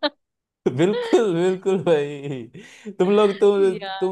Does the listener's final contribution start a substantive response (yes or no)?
no